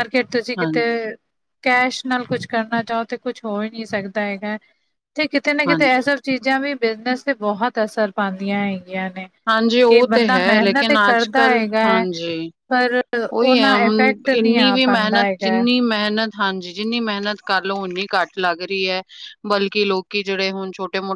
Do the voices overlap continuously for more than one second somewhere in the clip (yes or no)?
yes